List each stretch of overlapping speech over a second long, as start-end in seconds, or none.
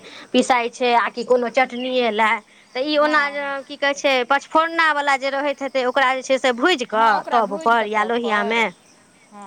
6.9-8.6